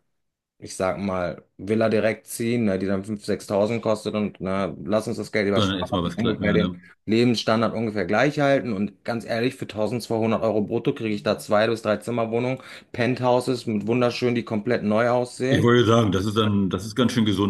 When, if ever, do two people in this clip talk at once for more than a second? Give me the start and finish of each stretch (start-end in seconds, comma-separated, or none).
5.5-6.8